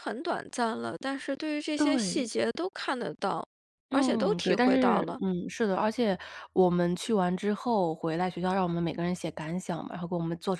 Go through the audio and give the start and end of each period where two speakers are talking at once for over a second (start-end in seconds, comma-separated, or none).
3.9-5.2